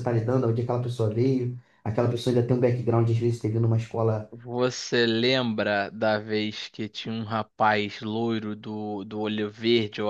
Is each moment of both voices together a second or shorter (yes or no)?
yes